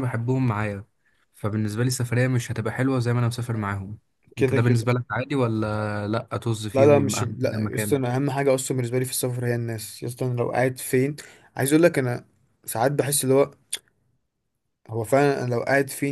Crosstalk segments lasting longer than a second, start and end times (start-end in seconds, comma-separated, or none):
6.7-8.0